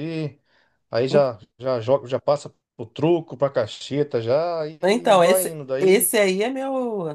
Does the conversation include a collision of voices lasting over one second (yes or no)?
yes